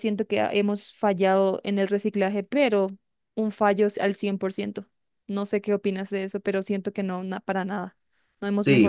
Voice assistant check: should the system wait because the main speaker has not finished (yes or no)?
no